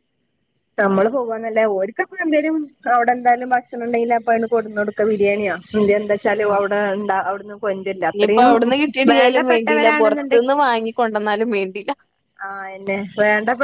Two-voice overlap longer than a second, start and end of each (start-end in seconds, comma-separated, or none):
9.1-10.4